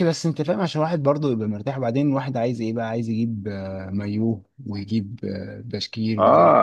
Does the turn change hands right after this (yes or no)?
yes